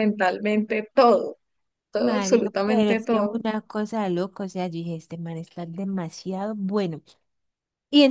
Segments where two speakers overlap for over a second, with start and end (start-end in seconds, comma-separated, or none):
2.0-3.4